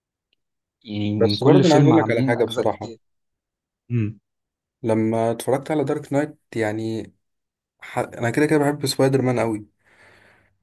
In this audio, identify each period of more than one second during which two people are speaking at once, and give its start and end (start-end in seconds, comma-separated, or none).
1.2-2.9